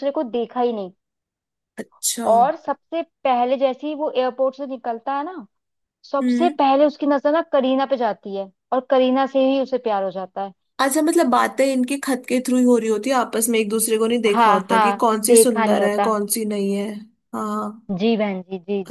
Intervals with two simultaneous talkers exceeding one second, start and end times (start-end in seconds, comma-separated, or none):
14.3-16.1